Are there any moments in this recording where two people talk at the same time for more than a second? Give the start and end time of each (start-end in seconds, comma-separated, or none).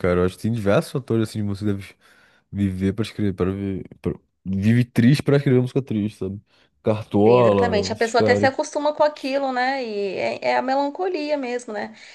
7.3-8.5